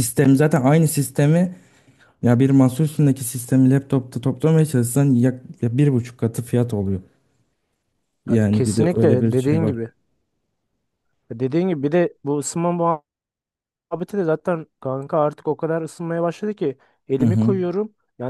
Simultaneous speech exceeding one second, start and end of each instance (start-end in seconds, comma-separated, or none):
8.3-9.8